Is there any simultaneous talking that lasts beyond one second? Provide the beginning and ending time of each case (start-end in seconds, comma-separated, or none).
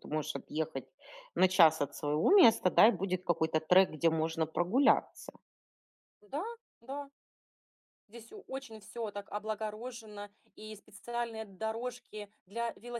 none